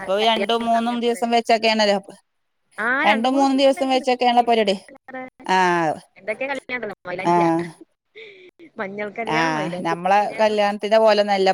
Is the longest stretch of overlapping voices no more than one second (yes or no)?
no